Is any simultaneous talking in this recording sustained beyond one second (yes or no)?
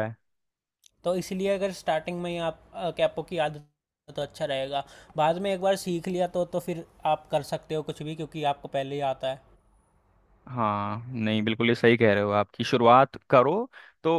no